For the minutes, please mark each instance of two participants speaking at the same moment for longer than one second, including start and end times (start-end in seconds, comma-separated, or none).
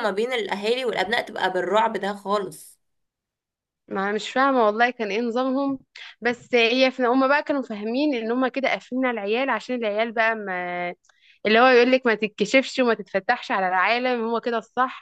none